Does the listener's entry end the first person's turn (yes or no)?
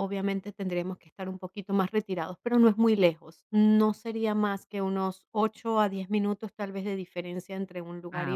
no